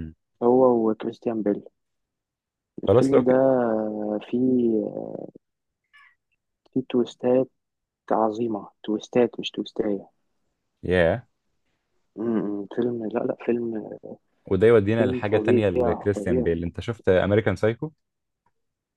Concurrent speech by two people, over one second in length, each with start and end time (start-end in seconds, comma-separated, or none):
14.9-16.5